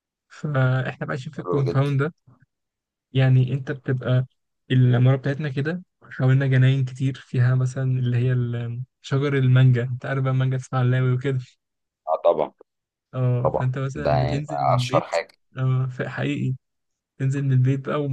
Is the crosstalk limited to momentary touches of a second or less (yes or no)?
no